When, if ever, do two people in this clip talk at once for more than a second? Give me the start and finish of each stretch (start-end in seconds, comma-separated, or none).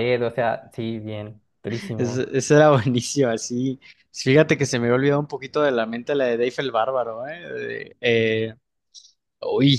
none